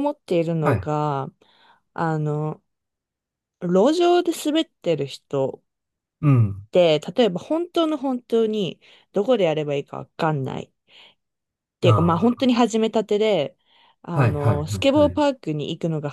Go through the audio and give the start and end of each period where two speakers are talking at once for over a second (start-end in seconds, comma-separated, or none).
14.1-15.3